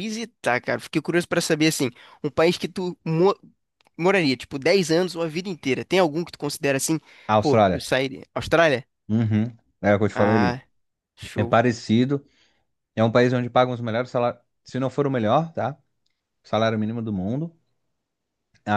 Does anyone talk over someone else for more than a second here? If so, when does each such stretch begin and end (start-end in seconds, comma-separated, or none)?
none